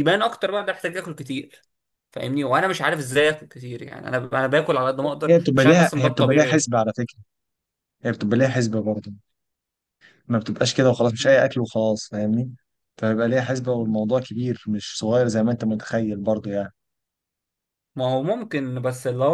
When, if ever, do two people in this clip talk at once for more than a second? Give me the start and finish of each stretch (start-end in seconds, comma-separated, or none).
5.3-6.7